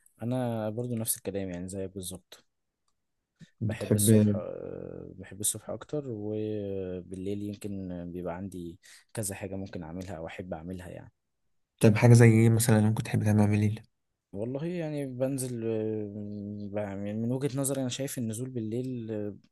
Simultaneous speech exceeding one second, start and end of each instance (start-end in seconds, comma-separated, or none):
none